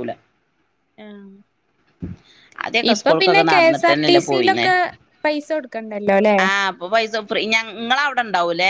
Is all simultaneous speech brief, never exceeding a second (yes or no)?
no